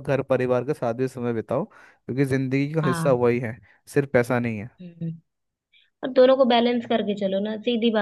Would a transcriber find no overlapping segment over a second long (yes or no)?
yes